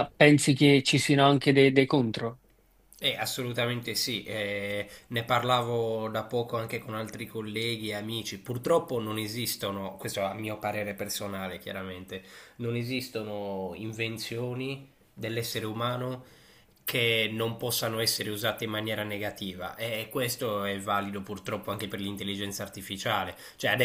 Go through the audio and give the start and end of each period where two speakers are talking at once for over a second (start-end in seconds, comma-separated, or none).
none